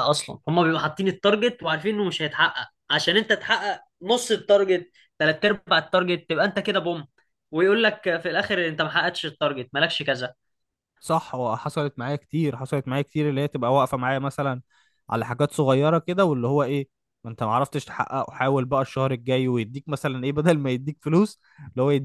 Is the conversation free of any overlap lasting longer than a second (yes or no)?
yes